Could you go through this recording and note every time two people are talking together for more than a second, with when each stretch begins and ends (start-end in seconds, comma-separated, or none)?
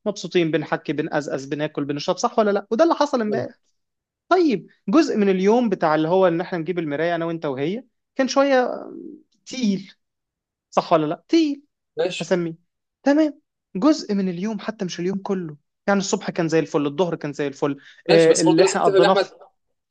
18.1-19.3